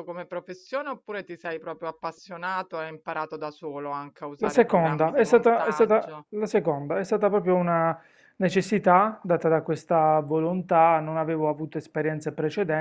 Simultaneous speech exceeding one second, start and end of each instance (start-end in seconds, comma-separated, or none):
4.3-6.3